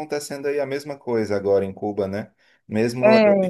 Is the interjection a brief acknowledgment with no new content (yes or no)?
yes